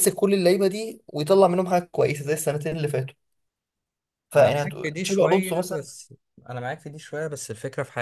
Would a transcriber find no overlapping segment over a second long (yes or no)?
no